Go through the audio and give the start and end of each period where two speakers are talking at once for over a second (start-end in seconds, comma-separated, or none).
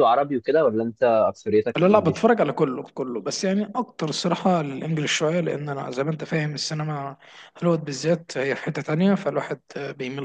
none